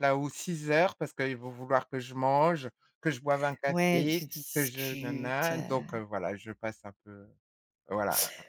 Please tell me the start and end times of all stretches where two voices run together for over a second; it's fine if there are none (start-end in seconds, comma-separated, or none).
3.7-6.0